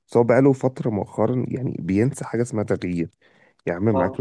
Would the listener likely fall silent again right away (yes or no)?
yes